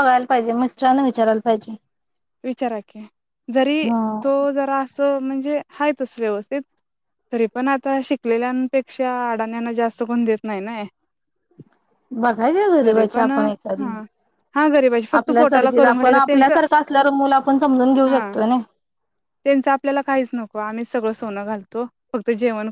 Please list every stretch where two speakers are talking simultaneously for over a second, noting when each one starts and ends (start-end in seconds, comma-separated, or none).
15.2-16.6